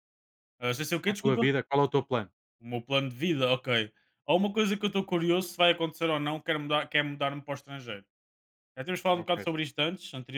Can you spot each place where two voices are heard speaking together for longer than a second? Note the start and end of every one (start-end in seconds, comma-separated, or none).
none